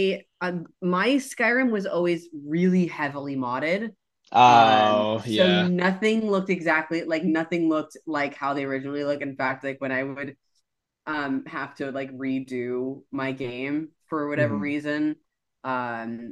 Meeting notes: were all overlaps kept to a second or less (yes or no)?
no